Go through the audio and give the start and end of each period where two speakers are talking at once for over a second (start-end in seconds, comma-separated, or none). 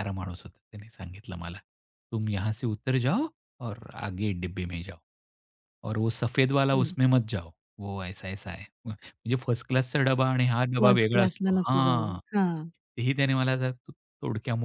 10.8-12.2